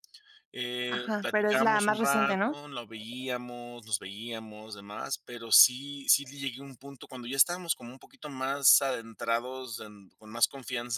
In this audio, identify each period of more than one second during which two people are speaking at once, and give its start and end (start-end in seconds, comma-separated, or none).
0.8-2.6